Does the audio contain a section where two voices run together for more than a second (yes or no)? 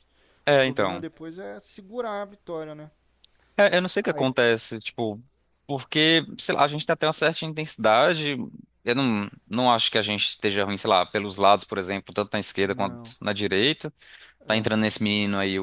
no